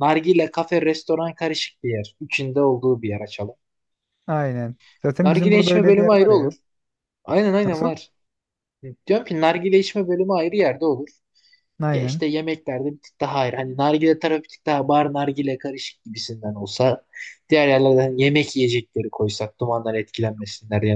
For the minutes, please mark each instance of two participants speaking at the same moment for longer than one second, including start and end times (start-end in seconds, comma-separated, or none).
5.2-6.5